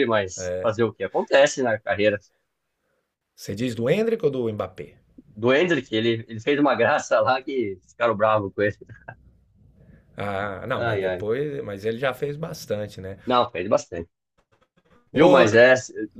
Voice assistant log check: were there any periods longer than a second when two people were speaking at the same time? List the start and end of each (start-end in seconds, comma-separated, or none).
none